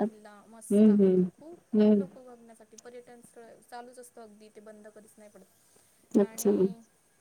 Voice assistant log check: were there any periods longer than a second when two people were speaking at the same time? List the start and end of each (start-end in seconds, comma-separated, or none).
0.7-2.0